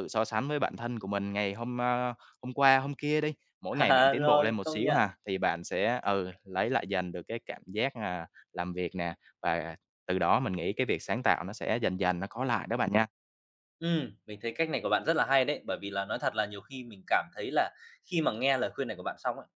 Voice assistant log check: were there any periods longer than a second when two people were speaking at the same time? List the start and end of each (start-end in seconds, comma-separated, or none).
3.7-5.0